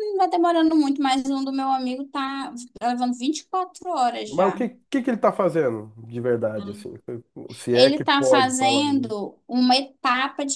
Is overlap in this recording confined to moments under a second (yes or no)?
no